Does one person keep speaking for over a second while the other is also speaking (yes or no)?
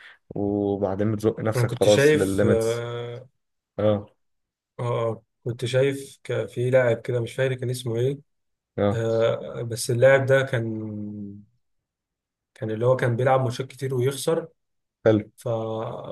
yes